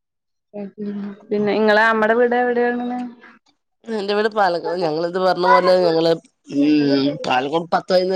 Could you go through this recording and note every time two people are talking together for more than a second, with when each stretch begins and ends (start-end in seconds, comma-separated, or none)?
none